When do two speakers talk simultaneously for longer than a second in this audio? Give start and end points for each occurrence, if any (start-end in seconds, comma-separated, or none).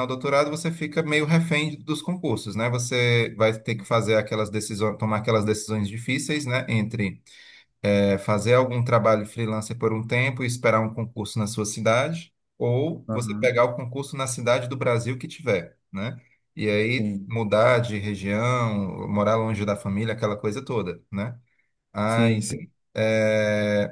none